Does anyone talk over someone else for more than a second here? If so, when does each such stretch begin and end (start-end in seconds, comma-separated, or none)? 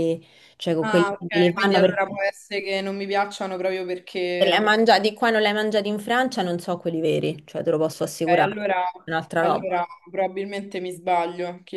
0.8-2.0